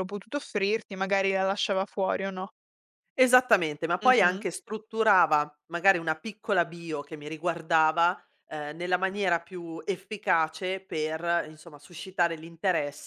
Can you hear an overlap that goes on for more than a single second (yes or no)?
no